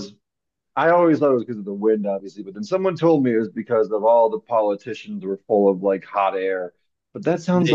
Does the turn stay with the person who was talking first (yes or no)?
yes